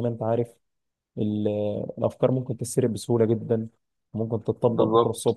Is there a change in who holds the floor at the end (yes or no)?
no